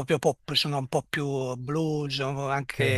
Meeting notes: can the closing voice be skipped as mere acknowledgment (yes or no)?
yes